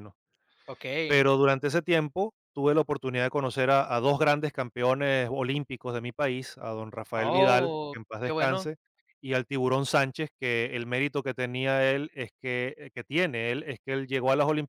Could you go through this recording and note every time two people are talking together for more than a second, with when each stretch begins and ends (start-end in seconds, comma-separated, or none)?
7.2-8.7